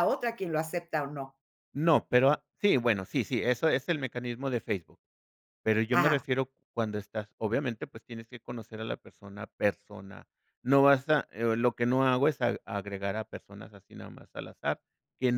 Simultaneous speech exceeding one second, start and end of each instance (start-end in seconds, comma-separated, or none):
none